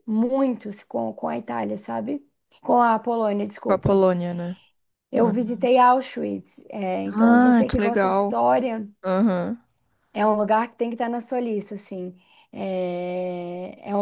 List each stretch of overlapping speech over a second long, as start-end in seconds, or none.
7.1-8.4